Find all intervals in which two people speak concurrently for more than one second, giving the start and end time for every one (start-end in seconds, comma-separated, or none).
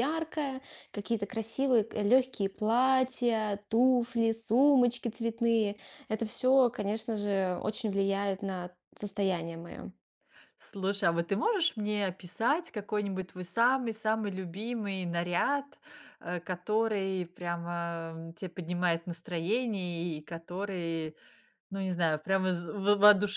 none